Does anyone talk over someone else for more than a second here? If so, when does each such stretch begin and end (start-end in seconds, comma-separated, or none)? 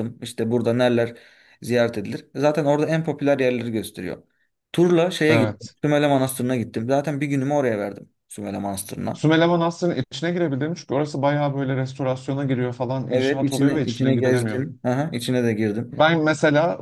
13.1-14.6